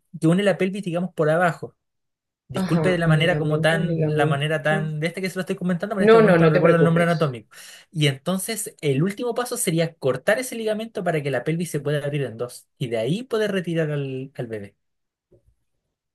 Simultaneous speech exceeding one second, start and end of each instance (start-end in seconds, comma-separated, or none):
2.5-4.9, 6.0-7.4